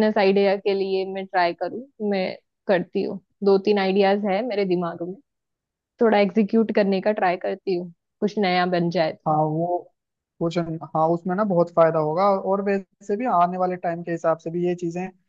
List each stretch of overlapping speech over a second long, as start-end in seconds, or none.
none